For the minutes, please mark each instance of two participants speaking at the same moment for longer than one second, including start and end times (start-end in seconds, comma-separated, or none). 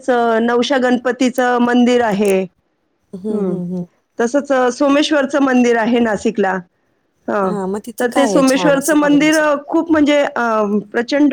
8.0-9.6